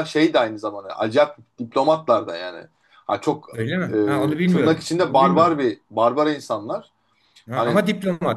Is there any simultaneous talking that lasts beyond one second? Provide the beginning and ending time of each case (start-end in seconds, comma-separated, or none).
3.5-5.6